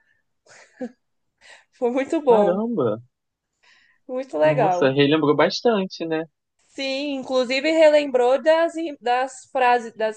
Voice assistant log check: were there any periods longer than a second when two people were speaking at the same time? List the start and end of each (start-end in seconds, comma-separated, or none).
none